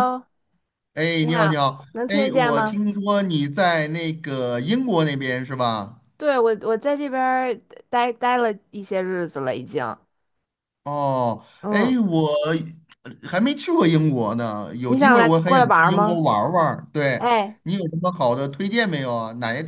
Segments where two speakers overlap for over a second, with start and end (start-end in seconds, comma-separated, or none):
1.2-2.8, 14.9-16.2